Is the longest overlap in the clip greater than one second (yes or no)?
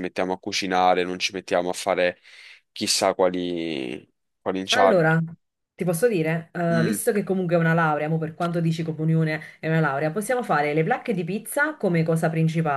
no